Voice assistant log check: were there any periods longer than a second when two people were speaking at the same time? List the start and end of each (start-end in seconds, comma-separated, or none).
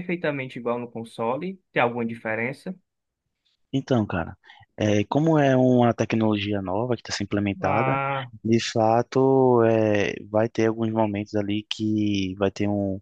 none